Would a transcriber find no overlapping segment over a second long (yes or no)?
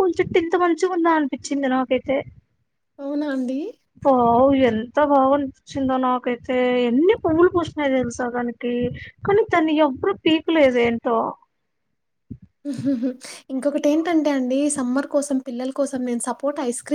yes